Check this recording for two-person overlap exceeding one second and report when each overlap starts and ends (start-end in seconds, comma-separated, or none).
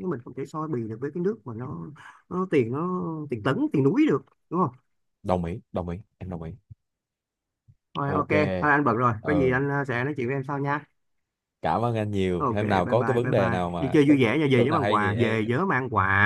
12.4-15.4